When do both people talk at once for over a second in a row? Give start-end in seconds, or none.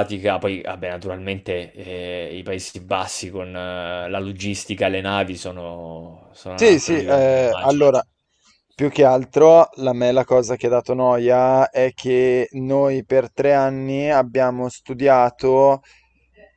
6.6-7.9